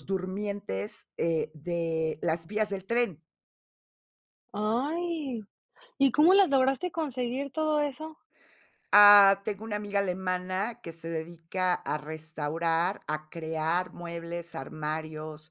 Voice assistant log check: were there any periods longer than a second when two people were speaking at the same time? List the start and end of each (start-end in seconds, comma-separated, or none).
none